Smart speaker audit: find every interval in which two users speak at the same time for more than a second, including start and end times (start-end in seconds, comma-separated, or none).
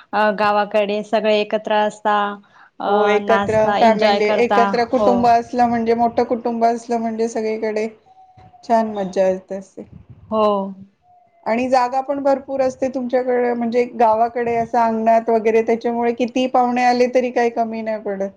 3.3-5.1